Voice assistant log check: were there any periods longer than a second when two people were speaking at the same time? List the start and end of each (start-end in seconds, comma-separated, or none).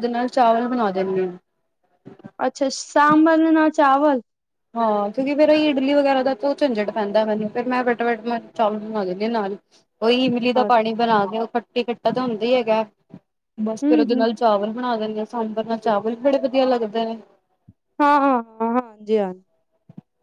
none